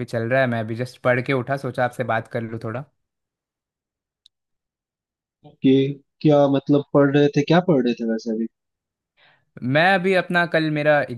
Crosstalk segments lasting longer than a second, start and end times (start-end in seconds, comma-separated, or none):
none